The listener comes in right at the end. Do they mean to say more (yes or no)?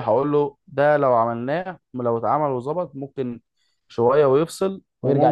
no